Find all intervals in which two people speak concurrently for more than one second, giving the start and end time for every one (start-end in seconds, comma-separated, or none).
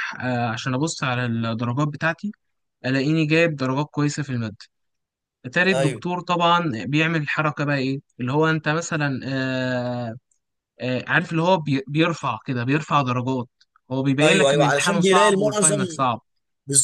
14.2-15.8